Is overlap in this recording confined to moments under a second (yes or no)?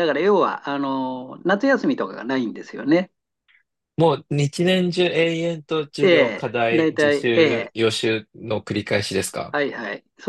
no